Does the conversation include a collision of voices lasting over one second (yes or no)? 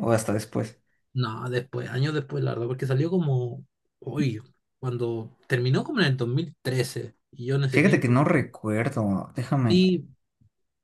no